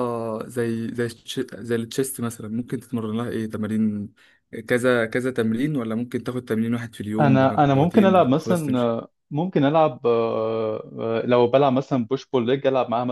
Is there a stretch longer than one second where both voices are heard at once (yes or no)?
yes